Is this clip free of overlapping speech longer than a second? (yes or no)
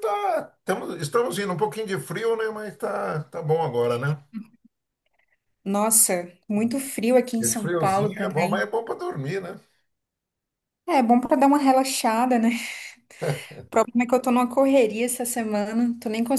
no